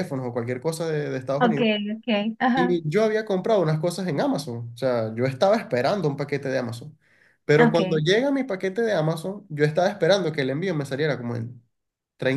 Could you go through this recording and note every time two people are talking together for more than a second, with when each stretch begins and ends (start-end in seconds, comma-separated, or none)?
none